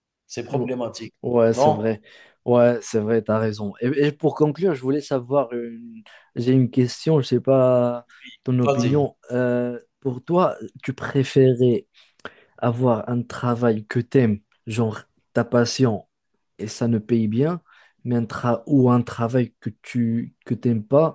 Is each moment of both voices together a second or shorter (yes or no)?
yes